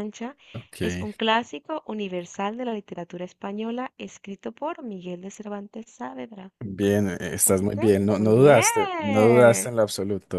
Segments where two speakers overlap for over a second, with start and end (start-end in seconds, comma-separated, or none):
7.4-9.7